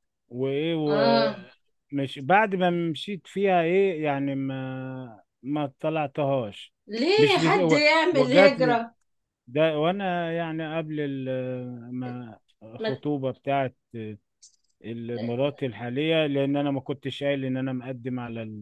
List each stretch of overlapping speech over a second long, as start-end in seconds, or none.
7.2-8.8